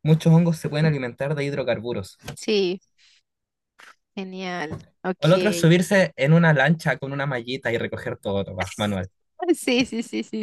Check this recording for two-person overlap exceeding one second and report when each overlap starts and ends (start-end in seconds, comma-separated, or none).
none